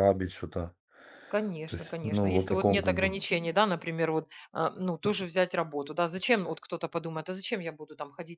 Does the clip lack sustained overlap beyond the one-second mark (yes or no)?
no